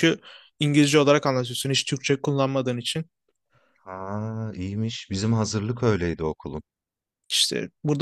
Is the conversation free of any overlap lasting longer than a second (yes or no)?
yes